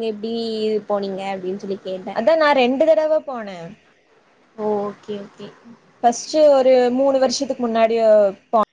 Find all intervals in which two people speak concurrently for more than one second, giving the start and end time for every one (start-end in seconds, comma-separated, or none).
none